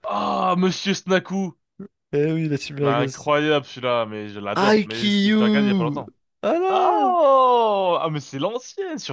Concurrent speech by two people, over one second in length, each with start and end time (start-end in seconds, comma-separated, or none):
4.6-6.0